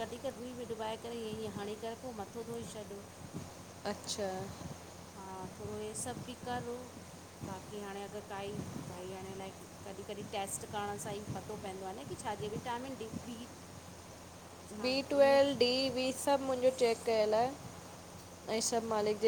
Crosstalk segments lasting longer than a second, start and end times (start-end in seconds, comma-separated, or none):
none